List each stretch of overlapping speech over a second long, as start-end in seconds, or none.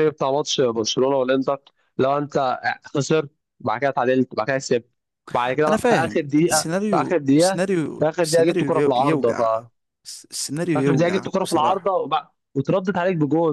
5.7-9.4, 10.7-11.9